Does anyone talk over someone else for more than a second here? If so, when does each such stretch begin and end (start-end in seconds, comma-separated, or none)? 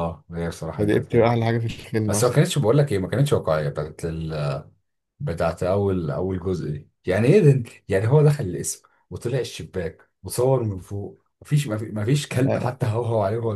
none